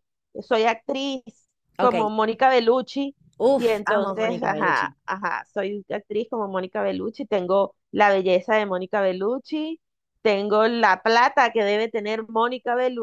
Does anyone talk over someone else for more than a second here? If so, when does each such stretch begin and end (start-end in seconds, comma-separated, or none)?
3.5-4.9